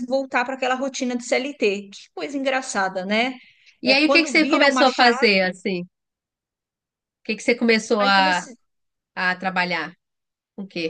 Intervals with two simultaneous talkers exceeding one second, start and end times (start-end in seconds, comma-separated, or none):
3.8-5.5